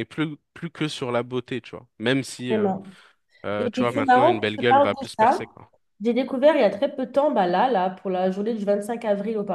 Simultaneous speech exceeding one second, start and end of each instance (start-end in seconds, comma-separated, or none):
3.6-5.4